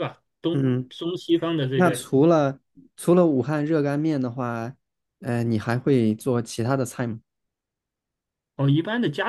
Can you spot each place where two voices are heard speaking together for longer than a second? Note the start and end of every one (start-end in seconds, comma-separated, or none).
none